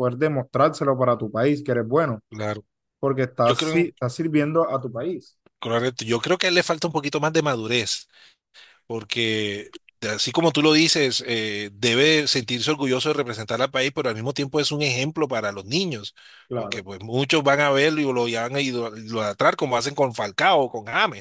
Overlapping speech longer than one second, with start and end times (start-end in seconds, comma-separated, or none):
none